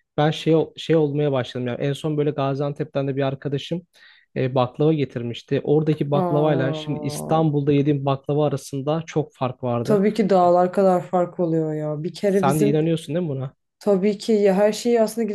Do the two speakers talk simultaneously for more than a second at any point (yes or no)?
yes